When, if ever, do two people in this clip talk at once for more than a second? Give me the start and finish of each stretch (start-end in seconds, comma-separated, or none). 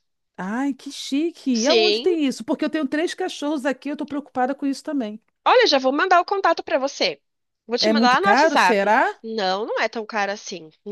7.8-9.1